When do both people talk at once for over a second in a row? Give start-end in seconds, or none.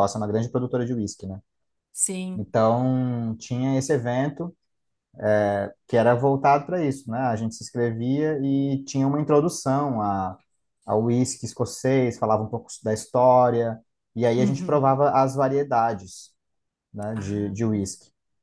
none